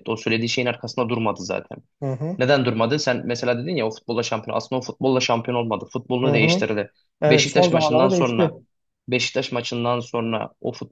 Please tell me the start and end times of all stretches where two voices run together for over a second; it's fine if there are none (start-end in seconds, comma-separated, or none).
7.3-8.5